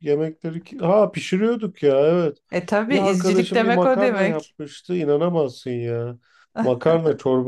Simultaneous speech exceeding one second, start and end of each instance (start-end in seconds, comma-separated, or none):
2.9-4.5